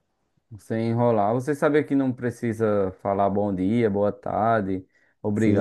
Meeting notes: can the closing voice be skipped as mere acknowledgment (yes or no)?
no